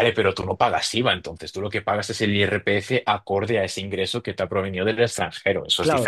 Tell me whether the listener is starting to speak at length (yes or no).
yes